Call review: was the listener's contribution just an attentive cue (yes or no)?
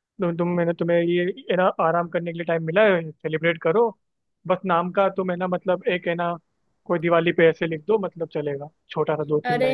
no